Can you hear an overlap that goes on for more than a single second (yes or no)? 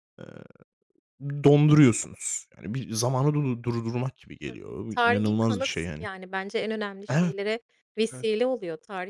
yes